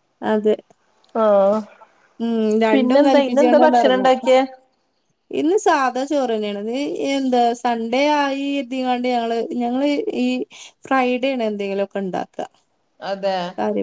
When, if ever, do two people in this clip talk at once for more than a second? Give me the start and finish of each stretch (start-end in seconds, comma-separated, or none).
2.7-4.1